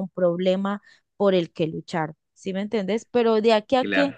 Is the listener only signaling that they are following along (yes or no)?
yes